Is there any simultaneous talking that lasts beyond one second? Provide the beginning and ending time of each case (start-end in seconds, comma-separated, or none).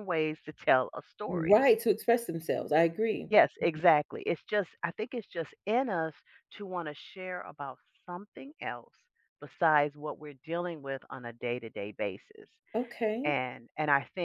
none